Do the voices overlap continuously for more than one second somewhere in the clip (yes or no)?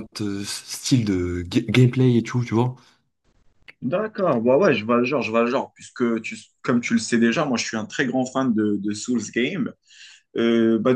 no